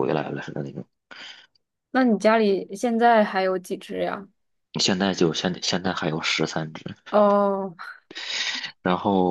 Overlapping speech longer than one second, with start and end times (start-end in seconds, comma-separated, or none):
none